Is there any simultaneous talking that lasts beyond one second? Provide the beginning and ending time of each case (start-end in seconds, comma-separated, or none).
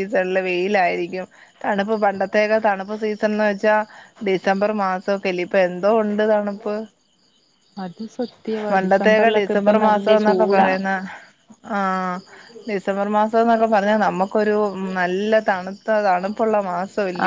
8.7-10.7